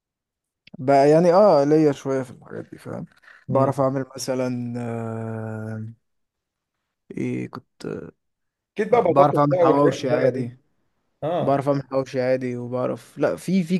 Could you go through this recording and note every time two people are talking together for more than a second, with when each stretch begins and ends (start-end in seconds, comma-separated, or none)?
8.9-10.5